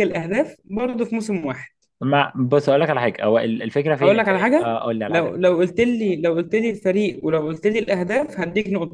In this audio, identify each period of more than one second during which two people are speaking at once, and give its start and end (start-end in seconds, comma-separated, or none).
4.0-5.4